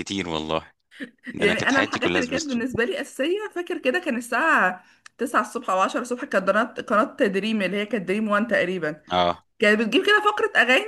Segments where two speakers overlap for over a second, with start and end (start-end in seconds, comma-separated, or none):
1.4-2.6